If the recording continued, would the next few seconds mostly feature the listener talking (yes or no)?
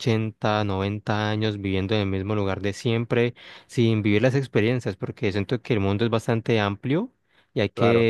no